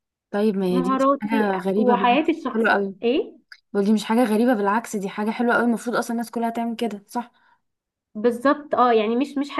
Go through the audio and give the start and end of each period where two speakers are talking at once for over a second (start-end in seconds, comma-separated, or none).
0.7-3.0